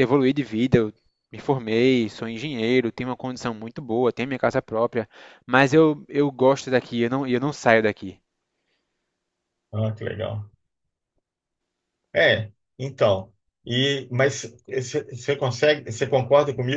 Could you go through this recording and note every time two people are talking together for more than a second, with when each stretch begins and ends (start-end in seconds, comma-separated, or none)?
none